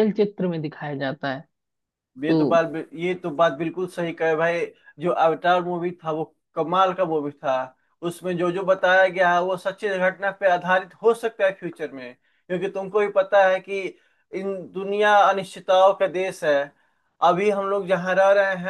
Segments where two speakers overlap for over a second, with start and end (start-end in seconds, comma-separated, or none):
none